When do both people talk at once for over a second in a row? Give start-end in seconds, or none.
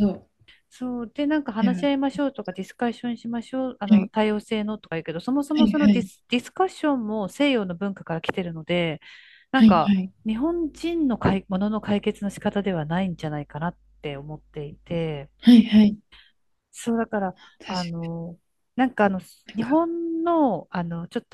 none